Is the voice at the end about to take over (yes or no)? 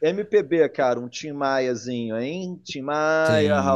yes